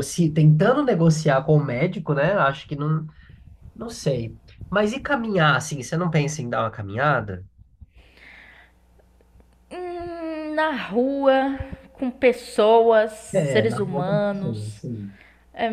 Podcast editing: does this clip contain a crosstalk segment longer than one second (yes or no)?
yes